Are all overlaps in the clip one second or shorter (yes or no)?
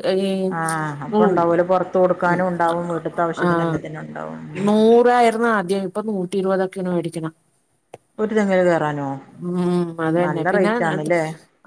no